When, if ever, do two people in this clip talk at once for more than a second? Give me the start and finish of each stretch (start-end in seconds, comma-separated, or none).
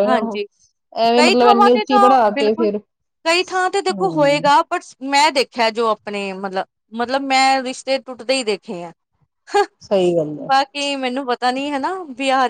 1.2-2.7